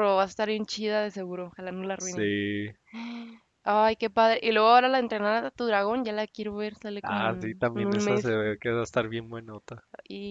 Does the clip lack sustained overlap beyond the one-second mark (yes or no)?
no